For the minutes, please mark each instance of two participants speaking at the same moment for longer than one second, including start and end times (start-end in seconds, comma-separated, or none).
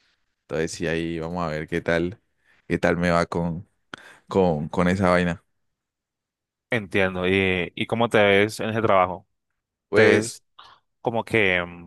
none